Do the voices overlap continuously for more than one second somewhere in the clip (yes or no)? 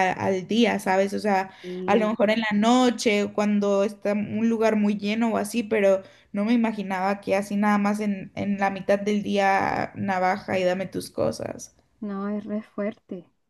no